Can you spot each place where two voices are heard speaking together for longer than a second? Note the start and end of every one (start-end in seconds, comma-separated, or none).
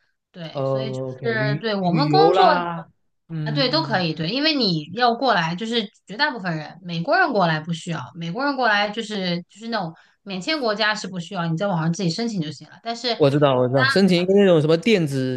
0.5-2.6